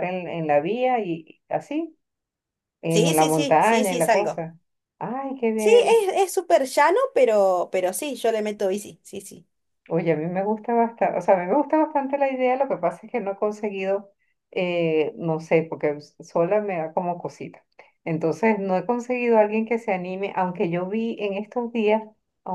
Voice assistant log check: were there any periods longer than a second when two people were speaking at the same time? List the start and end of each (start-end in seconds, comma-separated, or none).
2.9-4.4